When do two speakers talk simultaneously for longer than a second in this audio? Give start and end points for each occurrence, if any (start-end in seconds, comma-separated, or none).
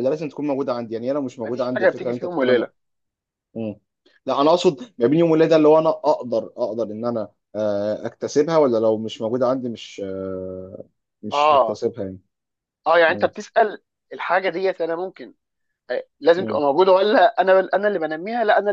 1.4-2.7